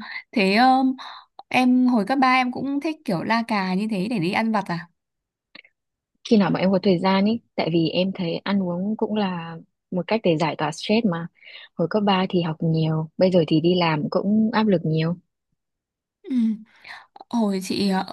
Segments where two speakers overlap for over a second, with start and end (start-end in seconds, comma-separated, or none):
none